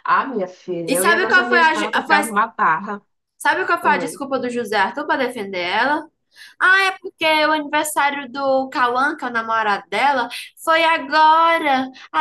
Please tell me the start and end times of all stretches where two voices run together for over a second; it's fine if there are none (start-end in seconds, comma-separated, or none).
0.9-2.3